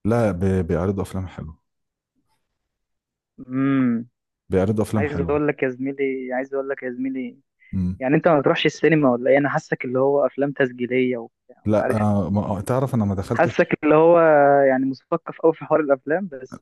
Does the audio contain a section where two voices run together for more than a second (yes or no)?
no